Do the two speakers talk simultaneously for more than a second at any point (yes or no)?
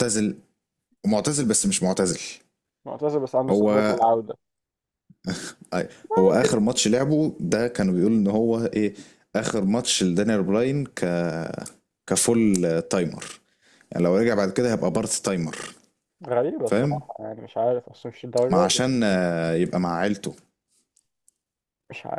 no